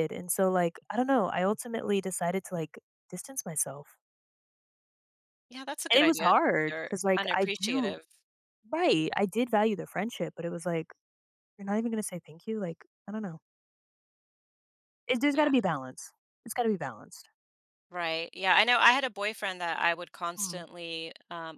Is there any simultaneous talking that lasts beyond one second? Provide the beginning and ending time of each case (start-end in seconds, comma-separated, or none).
5.9-8.0